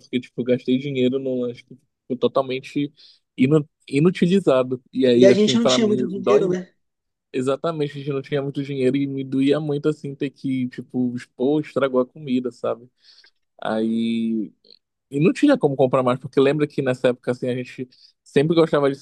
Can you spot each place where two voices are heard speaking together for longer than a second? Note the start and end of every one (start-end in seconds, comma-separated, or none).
5.1-6.5